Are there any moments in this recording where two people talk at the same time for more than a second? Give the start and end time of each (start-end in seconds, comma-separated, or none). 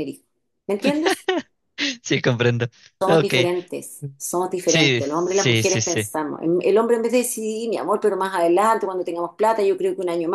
4.7-6.1